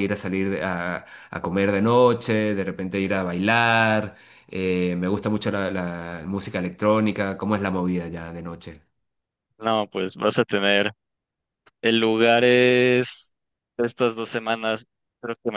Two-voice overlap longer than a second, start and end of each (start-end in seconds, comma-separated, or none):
none